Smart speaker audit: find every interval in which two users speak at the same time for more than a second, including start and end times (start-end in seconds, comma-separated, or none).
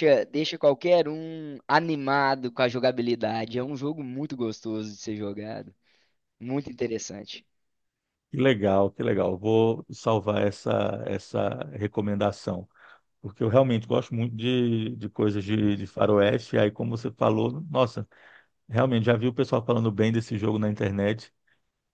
none